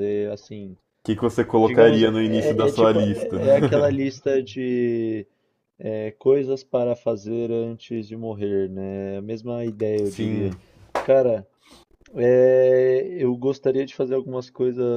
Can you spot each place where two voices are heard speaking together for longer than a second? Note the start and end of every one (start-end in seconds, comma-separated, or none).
1.5-3.4